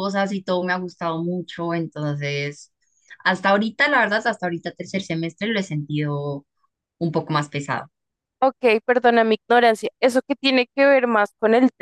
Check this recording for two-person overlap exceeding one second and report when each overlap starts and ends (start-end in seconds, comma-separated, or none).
none